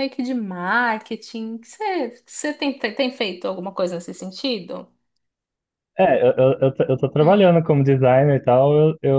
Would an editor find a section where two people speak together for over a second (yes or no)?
no